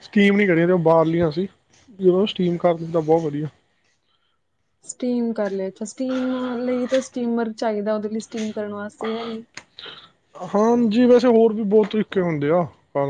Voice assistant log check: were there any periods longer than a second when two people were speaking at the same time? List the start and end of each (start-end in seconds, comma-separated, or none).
none